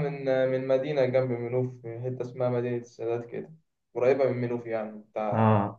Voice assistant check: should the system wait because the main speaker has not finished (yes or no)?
no